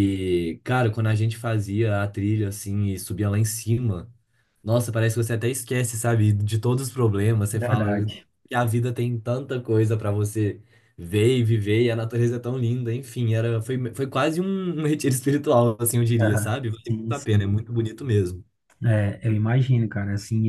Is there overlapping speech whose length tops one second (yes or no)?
yes